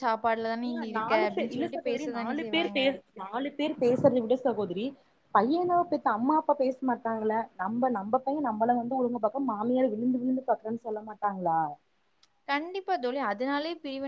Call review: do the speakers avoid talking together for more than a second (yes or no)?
no